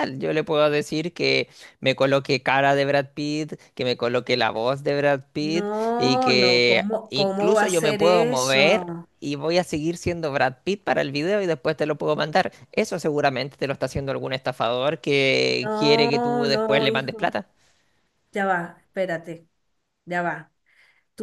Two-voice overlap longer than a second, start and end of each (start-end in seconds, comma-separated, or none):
5.4-9.1, 15.6-17.3